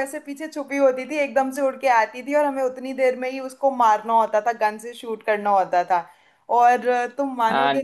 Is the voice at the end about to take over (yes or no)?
no